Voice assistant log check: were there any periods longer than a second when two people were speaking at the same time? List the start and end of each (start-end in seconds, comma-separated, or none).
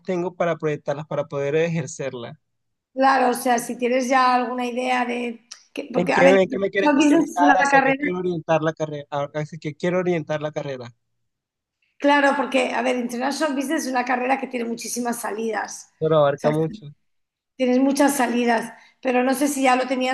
5.9-8.0